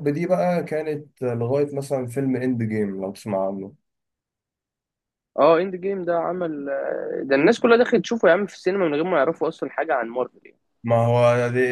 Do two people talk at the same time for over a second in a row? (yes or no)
no